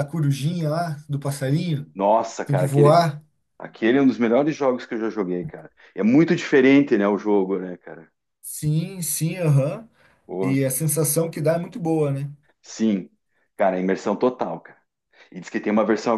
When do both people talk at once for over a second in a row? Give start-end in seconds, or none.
none